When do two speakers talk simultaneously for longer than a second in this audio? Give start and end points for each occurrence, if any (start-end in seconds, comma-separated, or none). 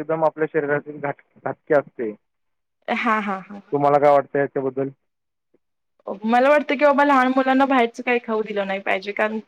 none